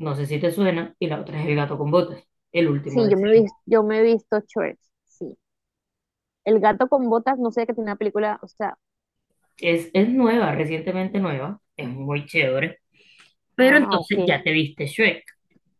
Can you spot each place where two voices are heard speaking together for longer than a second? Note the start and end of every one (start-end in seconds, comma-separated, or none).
none